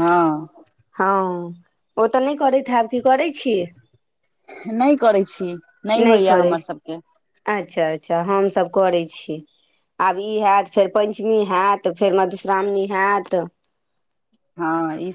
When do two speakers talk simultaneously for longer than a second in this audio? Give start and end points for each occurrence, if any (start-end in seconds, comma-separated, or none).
none